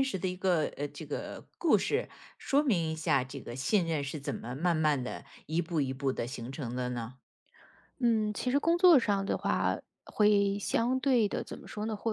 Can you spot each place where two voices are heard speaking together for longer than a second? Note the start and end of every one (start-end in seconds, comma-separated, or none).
none